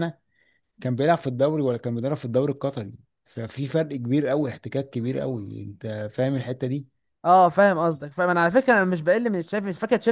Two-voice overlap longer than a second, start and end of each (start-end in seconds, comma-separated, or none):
none